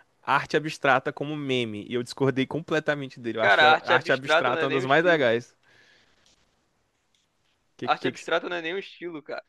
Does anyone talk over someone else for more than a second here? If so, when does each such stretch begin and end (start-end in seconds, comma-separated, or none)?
3.4-5.3